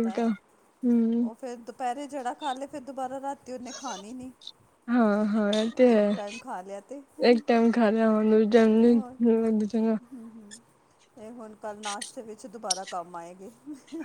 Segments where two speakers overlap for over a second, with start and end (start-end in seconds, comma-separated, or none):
none